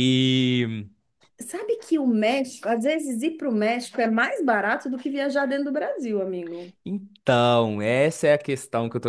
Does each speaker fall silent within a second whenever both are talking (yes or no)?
yes